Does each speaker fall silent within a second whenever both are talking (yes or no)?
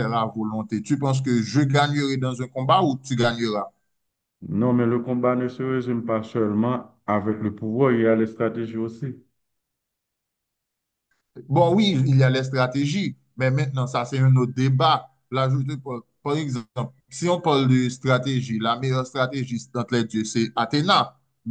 yes